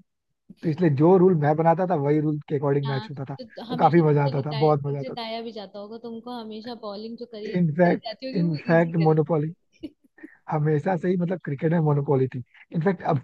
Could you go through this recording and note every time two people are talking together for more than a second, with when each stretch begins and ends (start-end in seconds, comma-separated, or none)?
2.9-5.1, 7.5-9.5